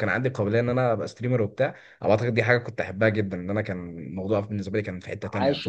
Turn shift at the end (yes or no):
yes